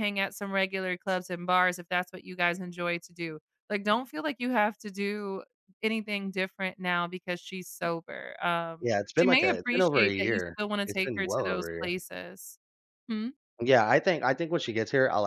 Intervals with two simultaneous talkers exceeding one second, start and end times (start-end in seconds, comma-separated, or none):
8.8-11.9